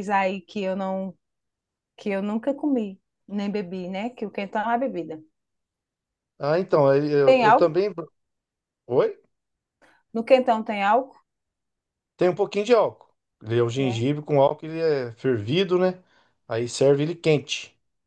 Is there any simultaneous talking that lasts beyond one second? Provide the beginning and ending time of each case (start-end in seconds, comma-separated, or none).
none